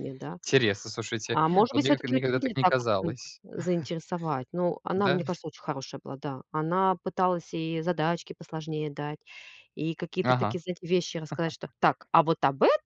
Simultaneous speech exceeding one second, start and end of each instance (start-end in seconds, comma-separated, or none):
1.3-3.4